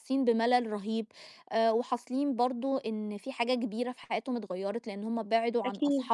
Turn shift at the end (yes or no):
no